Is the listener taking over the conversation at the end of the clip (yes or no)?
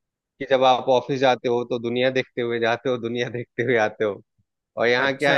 no